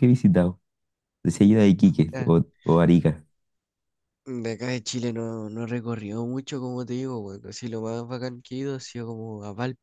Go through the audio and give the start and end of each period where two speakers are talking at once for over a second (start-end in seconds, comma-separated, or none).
none